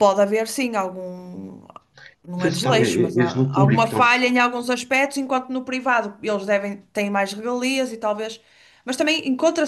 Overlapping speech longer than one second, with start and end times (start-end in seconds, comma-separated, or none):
2.4-4.0